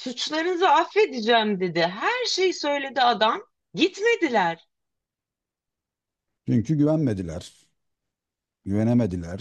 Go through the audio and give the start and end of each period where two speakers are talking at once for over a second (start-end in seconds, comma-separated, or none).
none